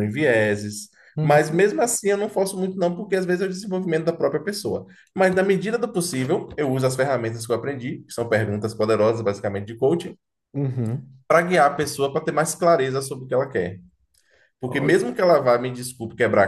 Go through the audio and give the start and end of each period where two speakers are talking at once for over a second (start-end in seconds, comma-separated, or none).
none